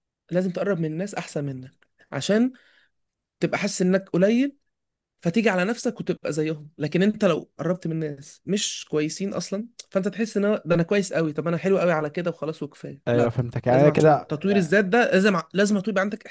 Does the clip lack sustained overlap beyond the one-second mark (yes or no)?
no